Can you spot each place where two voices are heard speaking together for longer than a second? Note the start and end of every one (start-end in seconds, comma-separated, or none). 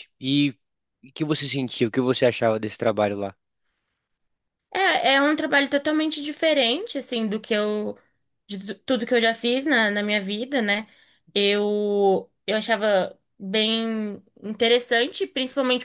none